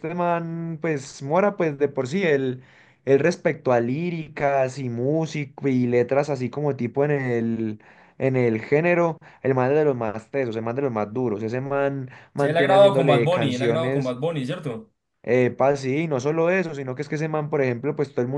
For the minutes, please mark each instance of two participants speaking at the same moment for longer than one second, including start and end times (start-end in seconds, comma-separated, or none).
12.4-14.2